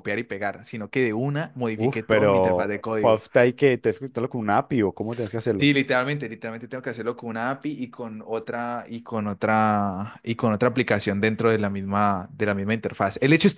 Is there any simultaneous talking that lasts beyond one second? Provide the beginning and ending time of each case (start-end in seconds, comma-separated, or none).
1.7-3.2